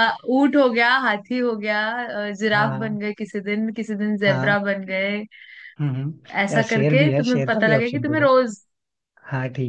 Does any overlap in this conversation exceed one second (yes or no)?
yes